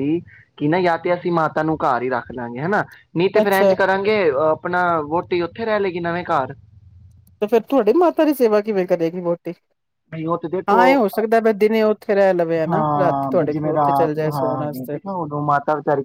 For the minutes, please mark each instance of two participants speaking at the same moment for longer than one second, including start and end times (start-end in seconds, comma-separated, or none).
12.7-15.0